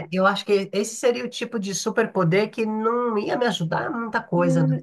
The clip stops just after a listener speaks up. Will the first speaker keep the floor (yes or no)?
no